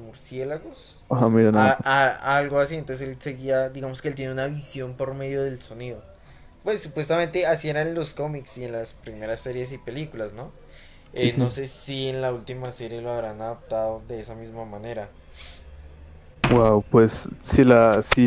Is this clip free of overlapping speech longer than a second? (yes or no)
yes